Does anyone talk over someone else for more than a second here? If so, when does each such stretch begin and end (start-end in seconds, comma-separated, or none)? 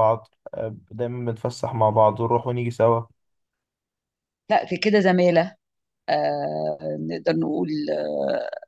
none